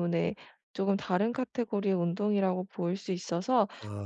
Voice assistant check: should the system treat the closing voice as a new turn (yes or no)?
no